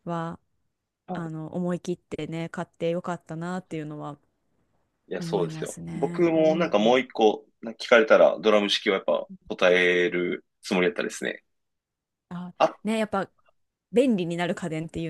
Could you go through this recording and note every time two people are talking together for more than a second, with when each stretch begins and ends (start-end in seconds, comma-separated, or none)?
5.2-7.0